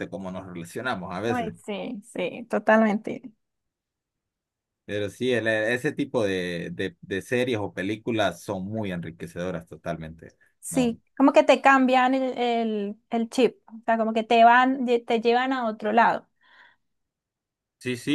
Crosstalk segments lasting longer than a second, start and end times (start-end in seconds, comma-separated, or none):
none